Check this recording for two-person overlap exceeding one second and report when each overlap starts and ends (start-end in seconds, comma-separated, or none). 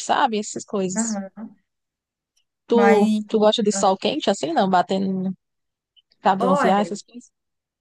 none